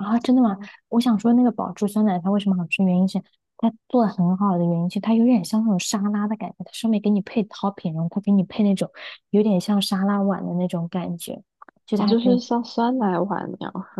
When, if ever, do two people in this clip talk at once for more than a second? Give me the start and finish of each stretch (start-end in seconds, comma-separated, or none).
none